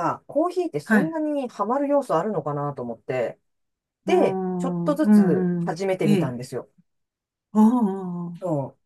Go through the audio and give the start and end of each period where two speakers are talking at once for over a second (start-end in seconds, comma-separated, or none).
4.0-6.3